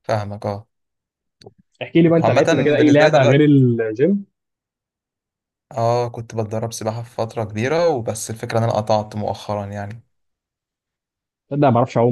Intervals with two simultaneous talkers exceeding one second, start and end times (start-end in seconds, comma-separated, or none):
2.1-3.6